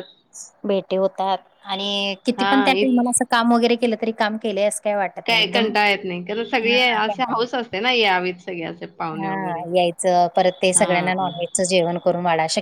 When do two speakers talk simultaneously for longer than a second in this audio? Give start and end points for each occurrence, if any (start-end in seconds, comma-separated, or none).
none